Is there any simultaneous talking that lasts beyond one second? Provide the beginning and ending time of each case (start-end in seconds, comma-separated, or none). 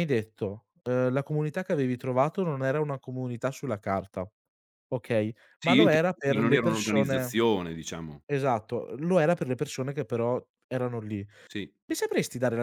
5.6-7.3